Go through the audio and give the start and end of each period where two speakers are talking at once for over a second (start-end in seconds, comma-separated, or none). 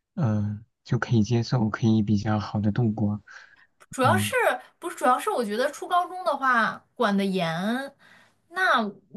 none